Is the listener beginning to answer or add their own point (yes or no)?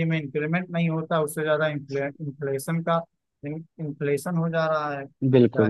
yes